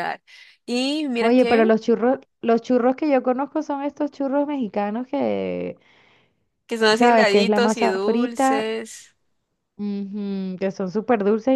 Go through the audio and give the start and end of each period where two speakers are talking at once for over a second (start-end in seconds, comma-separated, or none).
6.9-8.7